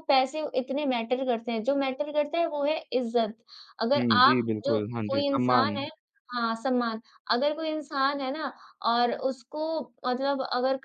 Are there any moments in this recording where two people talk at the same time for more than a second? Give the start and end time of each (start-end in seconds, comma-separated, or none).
4.0-5.9